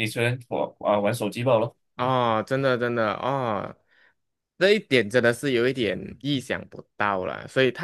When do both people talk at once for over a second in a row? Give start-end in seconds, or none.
none